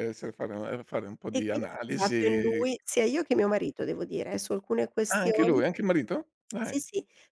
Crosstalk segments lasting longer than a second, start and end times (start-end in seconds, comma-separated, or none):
1.3-2.7